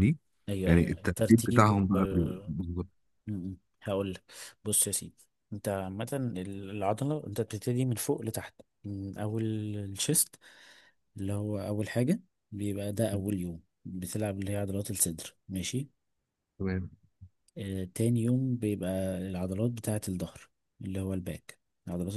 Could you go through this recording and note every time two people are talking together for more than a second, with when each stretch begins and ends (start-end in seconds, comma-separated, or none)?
0.7-2.5